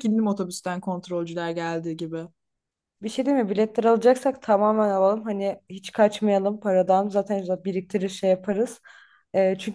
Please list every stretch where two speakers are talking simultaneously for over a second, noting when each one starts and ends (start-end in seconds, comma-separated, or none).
none